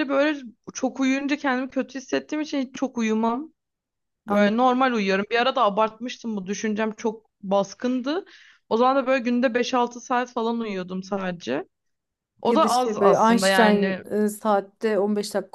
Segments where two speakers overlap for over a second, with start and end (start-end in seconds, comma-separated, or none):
12.5-14.0